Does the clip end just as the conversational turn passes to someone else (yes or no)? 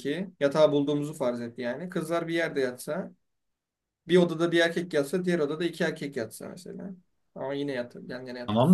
yes